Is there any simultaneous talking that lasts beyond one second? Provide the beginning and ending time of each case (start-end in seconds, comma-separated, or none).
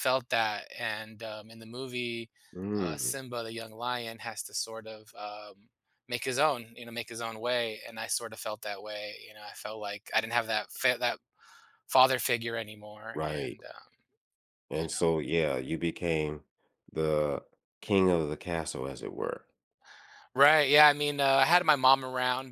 none